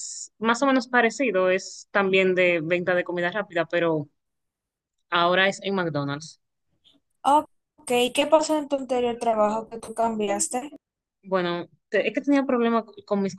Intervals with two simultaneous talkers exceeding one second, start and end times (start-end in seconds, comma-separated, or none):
none